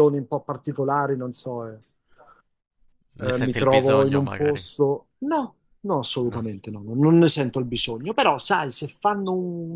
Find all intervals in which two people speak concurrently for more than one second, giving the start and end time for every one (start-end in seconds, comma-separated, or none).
3.2-4.7